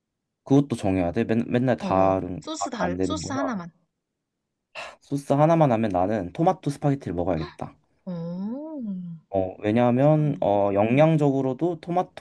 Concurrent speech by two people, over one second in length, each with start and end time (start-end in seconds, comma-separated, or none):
1.8-3.4